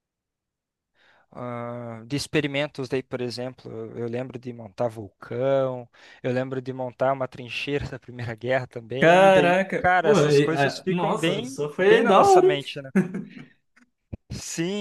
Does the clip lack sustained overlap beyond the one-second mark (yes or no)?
no